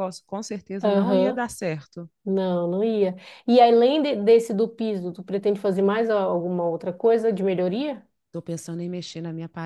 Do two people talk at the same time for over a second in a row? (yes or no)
no